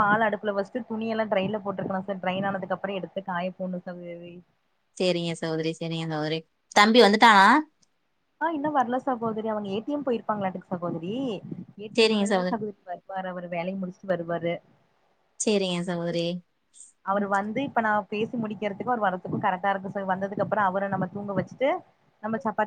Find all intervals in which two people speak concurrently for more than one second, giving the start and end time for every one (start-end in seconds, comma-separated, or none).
none